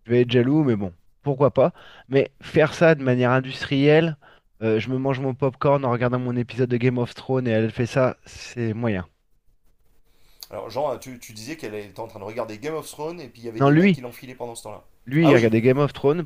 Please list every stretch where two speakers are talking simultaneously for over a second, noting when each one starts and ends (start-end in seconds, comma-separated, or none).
none